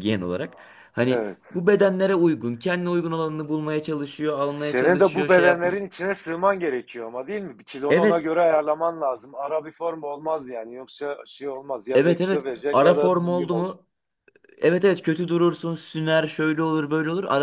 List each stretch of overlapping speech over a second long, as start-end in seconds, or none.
4.5-5.8, 11.9-13.8